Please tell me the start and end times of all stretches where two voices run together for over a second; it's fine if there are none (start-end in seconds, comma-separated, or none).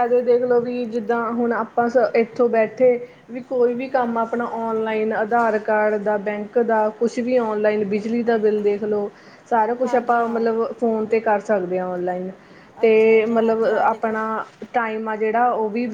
12.8-14.2